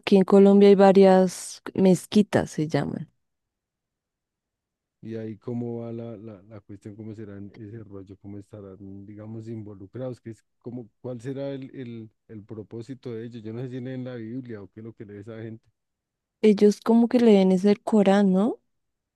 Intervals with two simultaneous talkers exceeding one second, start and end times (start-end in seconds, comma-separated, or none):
none